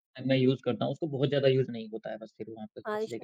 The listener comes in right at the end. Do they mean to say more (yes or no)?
yes